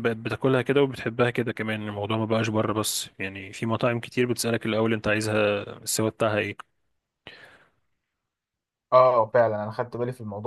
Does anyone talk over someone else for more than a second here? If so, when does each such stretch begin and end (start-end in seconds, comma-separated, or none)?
none